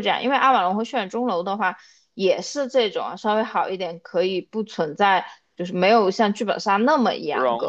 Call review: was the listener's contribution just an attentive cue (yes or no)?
no